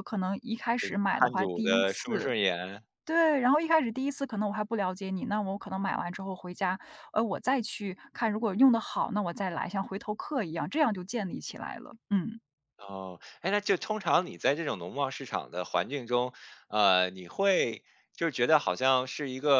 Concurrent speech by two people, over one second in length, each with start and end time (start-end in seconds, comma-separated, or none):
1.1-2.3